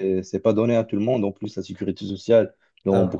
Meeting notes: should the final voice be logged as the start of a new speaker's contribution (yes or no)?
no